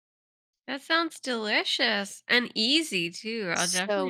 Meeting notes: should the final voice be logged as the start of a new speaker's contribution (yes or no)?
yes